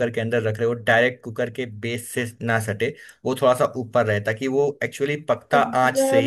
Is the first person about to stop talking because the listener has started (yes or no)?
yes